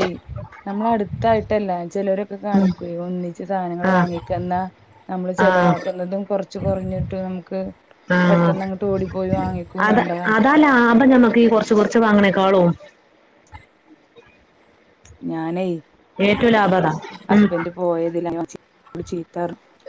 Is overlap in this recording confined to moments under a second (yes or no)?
yes